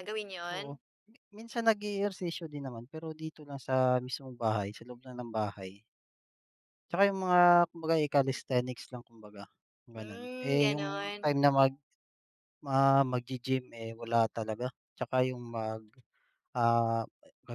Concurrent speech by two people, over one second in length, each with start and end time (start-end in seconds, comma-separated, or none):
10.0-11.3